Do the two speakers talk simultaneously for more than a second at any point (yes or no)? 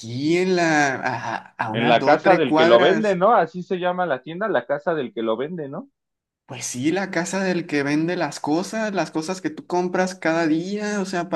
yes